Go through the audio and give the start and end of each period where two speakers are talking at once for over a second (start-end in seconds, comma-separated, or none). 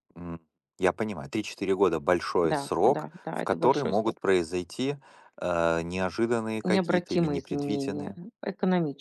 2.4-4.2, 6.7-8.2